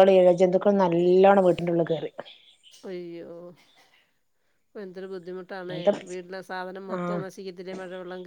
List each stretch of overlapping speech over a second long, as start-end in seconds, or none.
none